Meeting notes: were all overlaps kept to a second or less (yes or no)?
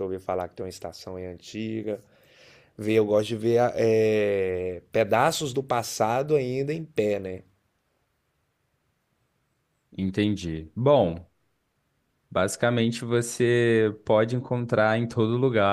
yes